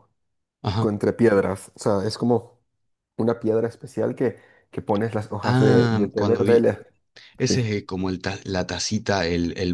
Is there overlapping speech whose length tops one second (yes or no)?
yes